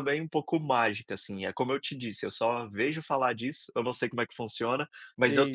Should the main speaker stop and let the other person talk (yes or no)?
no